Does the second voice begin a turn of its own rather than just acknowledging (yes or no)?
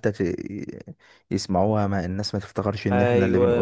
yes